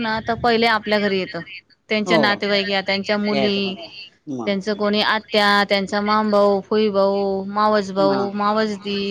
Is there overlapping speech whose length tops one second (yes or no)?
no